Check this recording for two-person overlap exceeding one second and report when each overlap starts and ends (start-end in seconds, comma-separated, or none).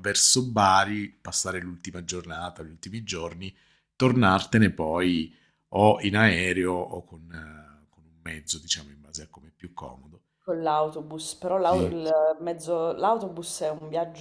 none